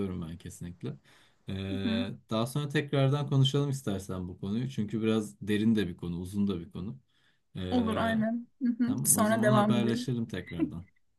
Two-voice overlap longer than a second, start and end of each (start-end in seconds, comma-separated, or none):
8.8-10.1